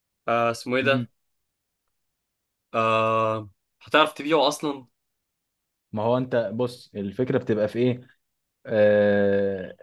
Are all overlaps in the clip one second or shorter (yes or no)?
yes